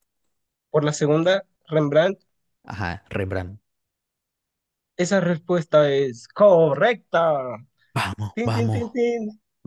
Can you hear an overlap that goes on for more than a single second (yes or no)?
no